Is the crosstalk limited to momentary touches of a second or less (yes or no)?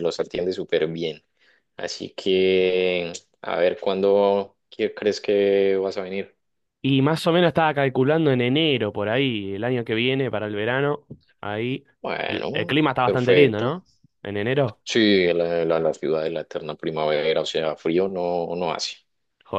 no